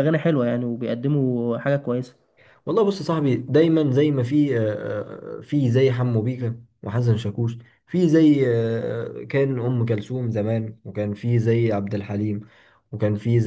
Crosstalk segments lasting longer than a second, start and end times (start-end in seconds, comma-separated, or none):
none